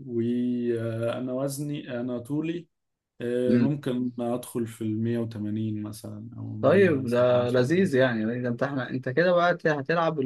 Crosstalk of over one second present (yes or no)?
yes